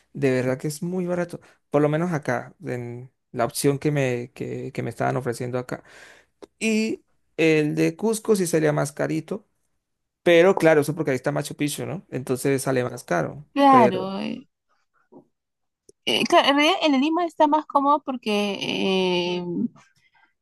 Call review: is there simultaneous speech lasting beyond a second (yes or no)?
no